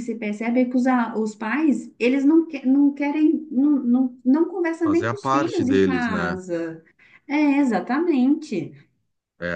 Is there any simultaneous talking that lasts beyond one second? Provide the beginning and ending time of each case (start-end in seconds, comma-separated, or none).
4.8-6.4